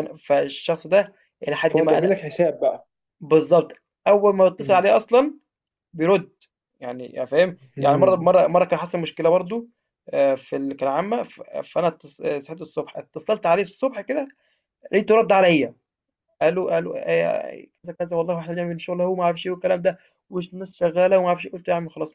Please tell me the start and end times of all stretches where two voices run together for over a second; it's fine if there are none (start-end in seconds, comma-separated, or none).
none